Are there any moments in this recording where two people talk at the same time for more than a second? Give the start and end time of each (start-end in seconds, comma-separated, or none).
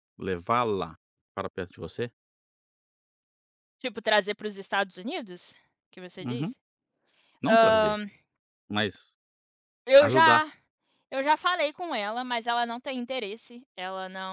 none